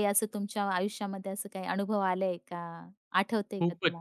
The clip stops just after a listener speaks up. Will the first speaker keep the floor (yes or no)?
no